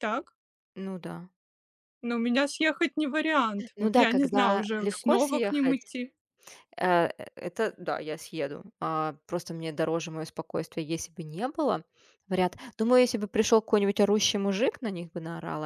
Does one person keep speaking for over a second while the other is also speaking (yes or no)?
yes